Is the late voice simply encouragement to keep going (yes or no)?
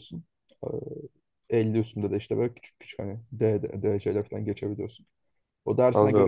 yes